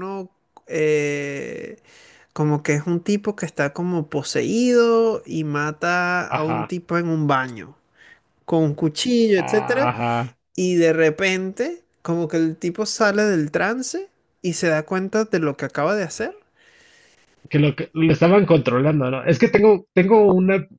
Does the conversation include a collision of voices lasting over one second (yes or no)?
no